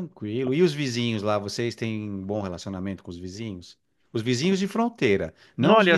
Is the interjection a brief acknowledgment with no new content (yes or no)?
yes